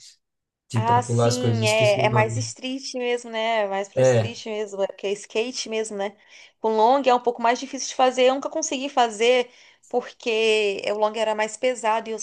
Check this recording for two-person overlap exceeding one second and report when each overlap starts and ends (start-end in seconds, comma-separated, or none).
0.8-2.5